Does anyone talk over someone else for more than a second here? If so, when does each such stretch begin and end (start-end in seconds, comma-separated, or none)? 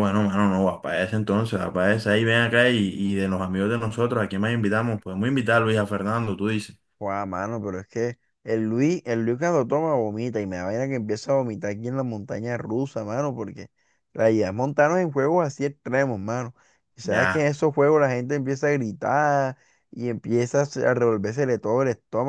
none